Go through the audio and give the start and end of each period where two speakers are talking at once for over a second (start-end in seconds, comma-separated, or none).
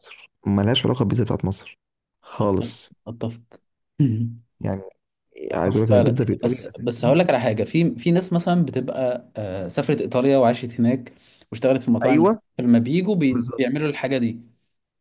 5.5-7.1